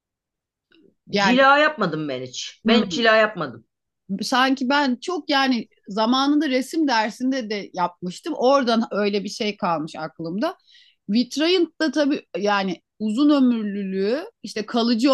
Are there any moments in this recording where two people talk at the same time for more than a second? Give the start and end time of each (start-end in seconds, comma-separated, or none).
none